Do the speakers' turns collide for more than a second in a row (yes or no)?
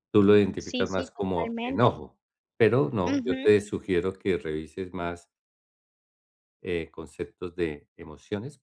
yes